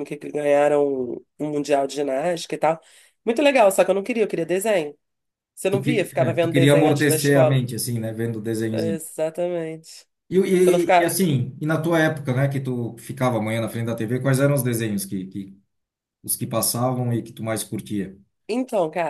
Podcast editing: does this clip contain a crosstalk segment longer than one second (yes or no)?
yes